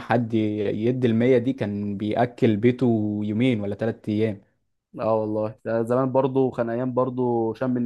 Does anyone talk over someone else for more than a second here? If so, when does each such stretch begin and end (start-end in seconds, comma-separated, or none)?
none